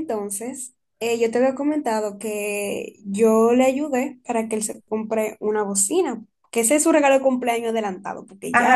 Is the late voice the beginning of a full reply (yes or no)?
yes